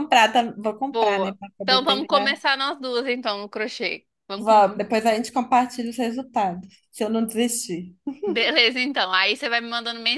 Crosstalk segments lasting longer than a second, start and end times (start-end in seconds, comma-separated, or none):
0.9-2.3